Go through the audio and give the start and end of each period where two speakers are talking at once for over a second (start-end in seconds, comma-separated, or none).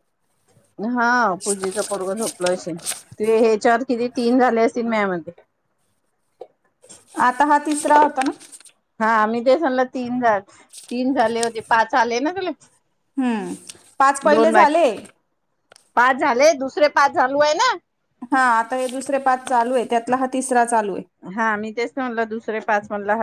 none